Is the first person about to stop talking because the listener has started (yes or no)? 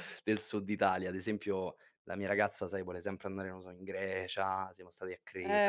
yes